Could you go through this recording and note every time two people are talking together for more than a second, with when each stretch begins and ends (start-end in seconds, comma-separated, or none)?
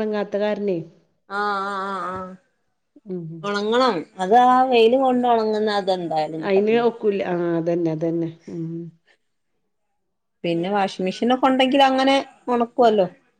none